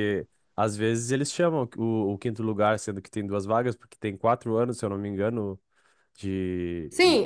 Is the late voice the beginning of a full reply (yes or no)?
yes